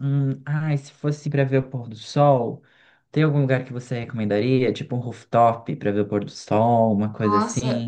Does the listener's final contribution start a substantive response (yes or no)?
yes